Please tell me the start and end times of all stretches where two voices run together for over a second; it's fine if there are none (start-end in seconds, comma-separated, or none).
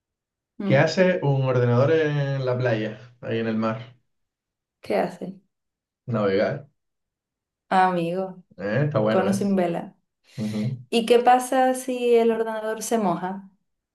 none